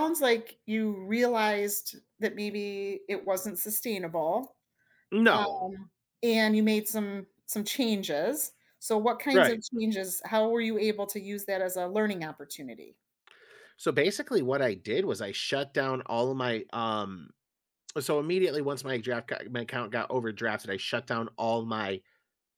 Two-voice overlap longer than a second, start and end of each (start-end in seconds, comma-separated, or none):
none